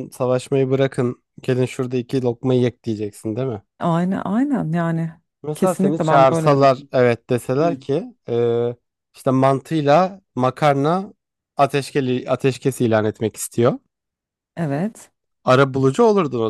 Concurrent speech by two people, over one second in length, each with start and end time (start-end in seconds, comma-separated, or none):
5.5-6.9